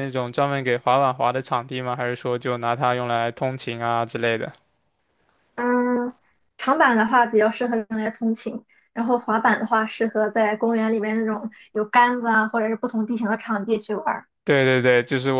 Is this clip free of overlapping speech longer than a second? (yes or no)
yes